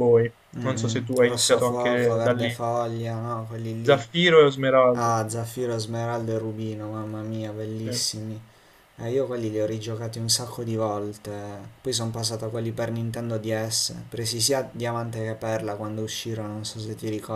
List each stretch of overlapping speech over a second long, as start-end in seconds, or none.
0.5-2.6